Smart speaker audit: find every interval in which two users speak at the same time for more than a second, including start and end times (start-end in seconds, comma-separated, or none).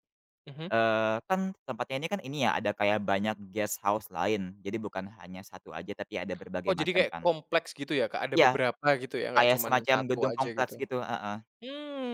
9.3-10.8